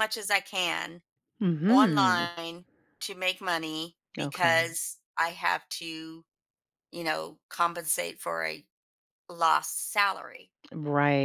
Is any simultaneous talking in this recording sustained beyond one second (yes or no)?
no